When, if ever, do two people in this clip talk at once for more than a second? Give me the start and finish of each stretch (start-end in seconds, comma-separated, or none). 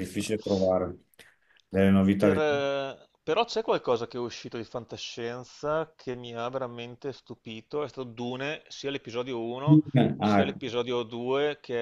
none